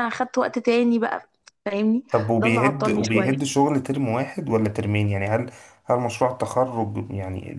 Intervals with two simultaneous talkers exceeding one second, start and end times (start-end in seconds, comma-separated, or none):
2.1-3.5